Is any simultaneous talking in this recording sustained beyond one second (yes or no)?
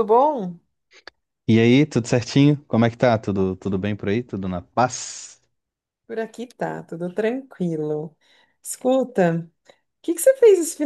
no